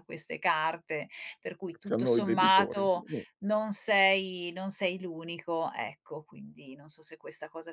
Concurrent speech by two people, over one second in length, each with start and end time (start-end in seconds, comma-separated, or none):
1.7-3.0